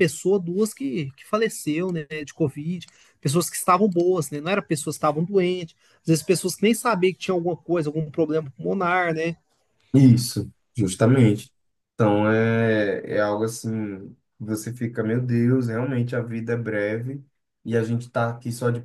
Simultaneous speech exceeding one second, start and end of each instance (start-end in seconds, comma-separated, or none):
none